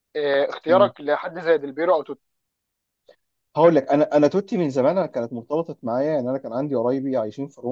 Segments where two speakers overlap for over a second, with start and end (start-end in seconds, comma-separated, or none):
none